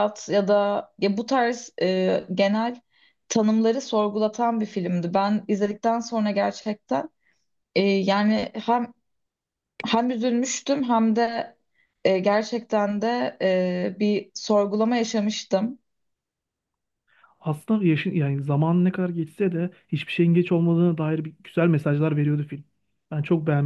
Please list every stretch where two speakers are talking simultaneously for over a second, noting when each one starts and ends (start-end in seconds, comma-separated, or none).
none